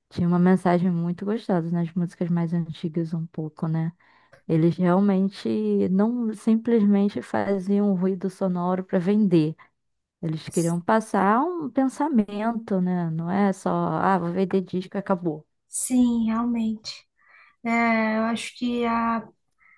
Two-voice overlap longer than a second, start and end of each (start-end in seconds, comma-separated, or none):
none